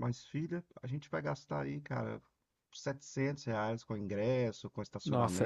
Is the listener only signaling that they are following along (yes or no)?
yes